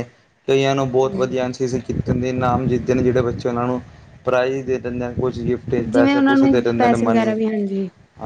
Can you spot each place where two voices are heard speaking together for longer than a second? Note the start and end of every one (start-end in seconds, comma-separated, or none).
5.9-7.3